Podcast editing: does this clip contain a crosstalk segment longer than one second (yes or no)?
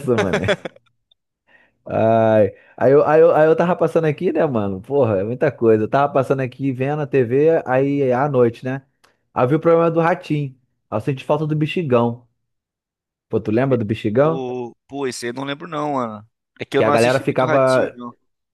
yes